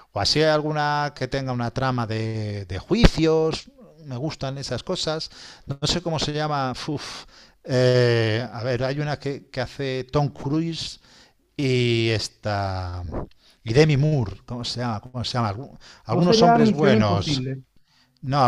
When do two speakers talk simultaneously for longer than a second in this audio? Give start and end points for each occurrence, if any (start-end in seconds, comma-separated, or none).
16.1-17.6